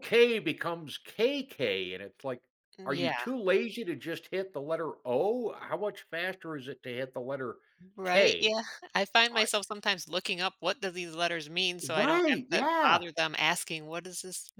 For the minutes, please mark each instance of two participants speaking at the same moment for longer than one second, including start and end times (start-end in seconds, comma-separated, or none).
11.8-13.0